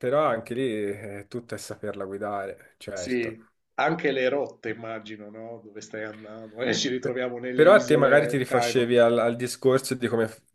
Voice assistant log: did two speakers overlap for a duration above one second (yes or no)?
yes